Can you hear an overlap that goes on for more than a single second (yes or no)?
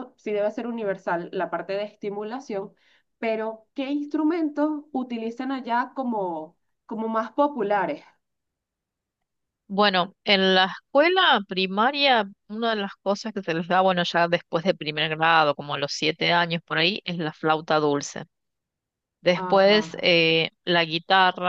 no